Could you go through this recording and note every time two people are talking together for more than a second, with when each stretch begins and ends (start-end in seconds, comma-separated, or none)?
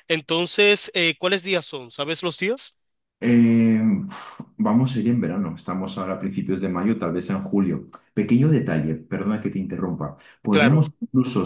none